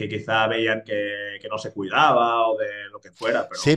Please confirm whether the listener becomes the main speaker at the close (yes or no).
yes